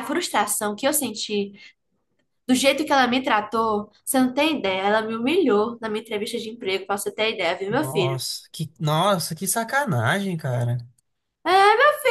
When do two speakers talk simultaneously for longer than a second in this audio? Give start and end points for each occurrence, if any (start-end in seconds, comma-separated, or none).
none